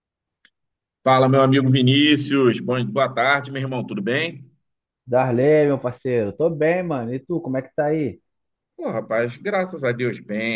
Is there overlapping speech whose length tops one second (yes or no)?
no